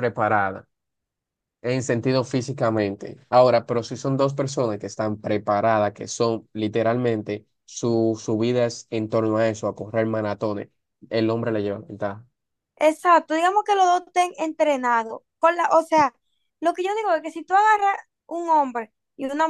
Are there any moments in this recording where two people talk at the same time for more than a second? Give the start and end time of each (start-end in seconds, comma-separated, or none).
none